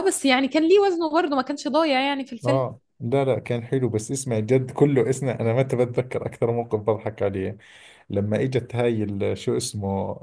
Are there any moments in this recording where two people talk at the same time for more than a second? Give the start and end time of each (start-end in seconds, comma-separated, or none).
none